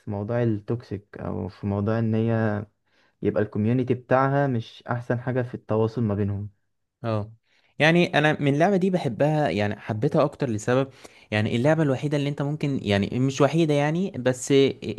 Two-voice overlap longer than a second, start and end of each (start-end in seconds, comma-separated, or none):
none